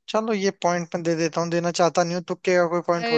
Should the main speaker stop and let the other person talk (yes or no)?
yes